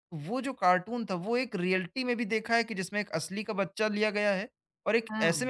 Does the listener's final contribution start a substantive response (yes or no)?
no